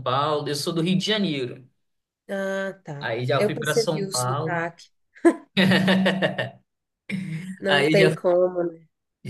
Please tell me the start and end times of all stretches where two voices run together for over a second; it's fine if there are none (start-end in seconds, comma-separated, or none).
3.0-4.7